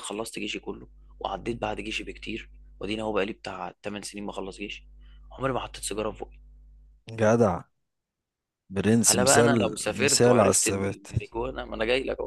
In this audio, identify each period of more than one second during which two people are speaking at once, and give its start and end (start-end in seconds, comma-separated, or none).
9.1-11.1